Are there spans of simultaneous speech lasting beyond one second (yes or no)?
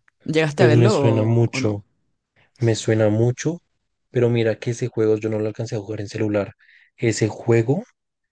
yes